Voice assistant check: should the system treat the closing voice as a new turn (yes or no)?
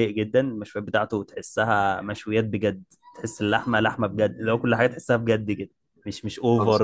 no